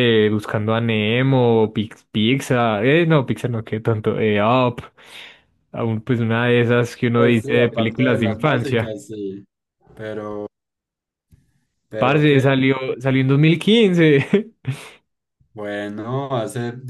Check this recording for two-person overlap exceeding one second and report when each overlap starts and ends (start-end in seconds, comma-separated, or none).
7.1-9.0